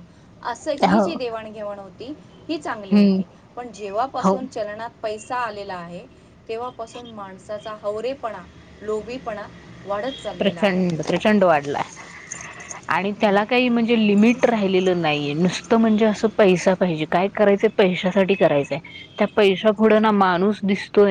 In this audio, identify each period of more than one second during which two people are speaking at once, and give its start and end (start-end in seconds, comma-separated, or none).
none